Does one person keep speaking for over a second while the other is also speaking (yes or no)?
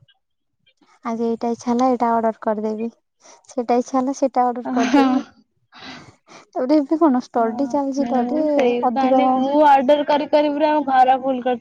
yes